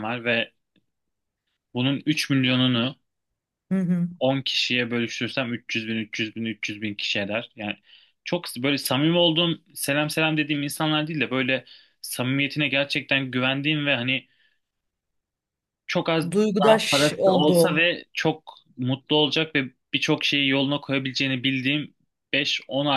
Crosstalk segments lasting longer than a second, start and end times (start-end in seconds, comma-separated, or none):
16.3-17.9